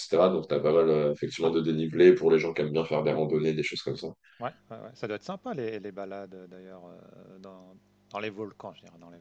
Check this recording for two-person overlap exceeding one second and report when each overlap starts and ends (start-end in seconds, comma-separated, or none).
none